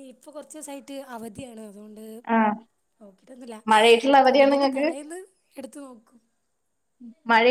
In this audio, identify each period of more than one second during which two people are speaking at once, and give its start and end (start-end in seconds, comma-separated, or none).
none